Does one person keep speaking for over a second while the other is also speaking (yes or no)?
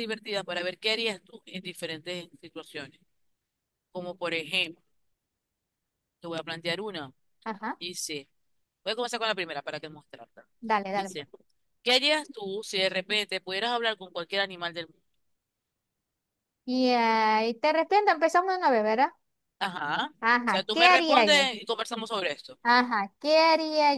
yes